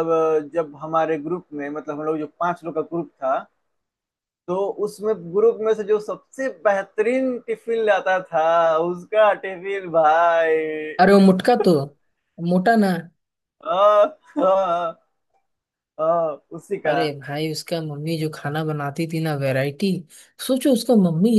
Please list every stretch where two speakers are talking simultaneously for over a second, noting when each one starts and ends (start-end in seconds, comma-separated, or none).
none